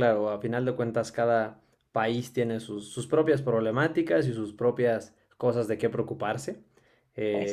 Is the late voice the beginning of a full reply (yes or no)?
no